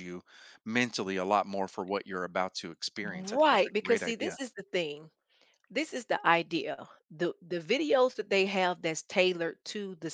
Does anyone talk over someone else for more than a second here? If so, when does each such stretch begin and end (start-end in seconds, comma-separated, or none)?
3.0-4.4